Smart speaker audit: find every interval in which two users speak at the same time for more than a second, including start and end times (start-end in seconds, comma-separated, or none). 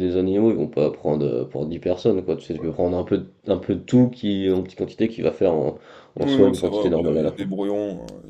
6.2-7.5